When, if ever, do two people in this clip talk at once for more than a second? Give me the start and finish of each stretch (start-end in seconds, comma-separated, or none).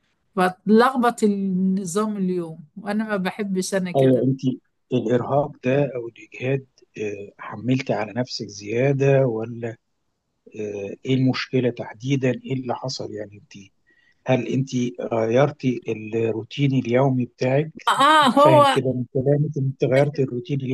none